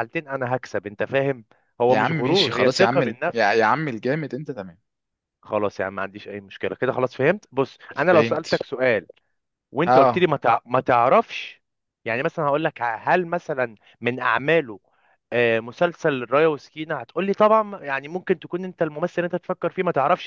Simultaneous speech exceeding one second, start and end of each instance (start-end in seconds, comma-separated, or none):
1.9-3.6